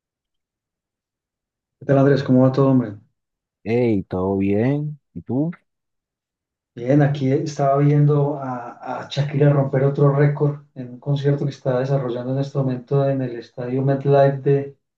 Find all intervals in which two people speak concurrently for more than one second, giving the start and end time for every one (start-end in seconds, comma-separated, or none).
none